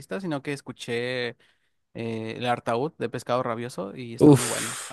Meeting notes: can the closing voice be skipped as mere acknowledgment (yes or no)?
no